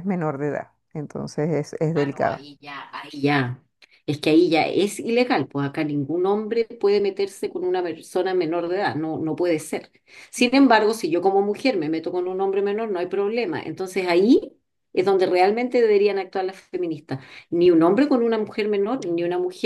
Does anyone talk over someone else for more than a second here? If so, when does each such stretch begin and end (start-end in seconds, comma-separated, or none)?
none